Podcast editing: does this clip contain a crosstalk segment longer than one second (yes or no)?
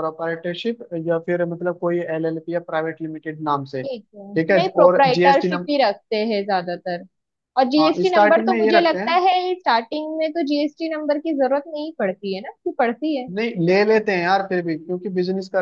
yes